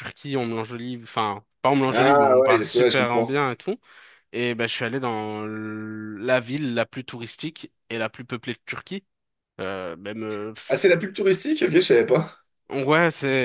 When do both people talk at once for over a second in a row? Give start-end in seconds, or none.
1.9-3.3